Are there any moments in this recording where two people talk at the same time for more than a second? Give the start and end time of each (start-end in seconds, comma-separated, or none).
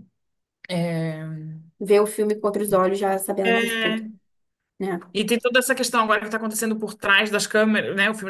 none